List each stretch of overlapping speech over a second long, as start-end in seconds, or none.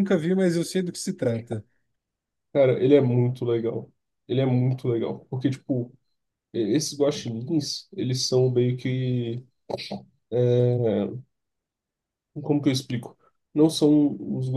none